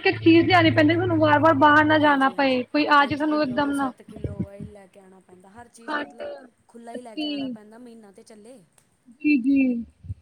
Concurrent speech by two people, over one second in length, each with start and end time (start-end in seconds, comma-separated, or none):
2.0-3.9